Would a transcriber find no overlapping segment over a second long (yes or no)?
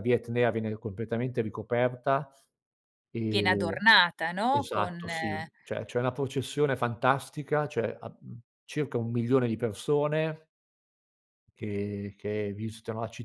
yes